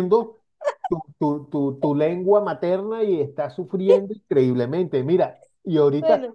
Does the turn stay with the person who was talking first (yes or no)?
yes